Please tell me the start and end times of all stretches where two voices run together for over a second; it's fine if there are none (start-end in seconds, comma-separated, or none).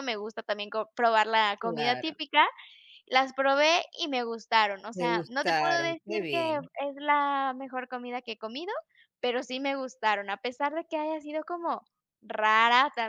4.9-6.4